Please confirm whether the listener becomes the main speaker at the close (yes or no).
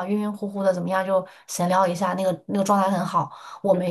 no